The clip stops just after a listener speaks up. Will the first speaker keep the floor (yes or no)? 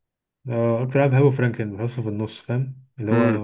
no